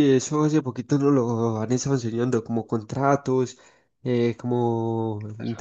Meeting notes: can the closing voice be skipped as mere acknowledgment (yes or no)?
yes